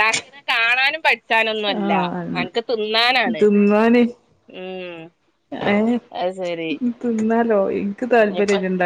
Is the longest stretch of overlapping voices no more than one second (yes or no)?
yes